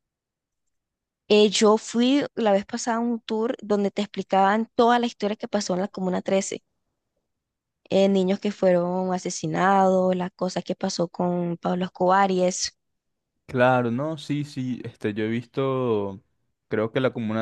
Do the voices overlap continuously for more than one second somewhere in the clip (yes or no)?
no